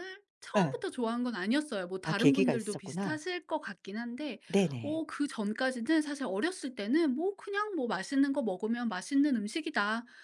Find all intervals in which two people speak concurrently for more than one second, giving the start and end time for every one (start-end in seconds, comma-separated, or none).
2.0-3.2